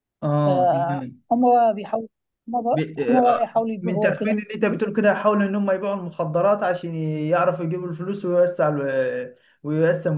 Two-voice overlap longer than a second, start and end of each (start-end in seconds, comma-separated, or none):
2.7-4.4